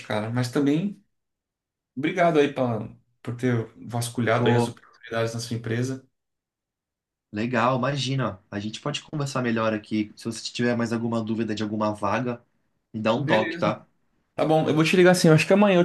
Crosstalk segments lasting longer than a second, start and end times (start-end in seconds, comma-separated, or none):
none